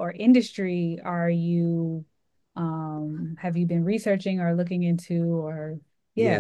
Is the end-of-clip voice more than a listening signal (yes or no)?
yes